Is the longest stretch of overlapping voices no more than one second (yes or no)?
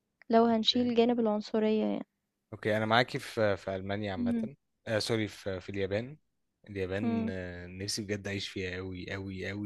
yes